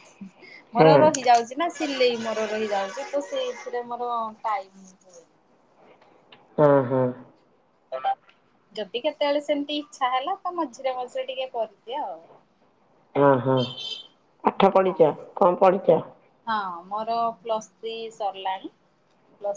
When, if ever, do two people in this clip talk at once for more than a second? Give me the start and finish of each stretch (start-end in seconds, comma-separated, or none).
none